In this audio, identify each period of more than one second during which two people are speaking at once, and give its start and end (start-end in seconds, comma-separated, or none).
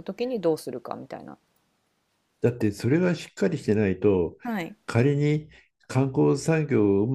none